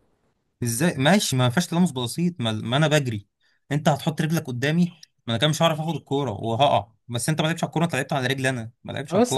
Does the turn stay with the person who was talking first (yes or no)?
no